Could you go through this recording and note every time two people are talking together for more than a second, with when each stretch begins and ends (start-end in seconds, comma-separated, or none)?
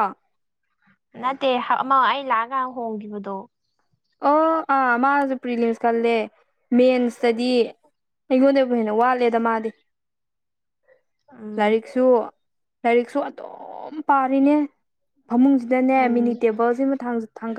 none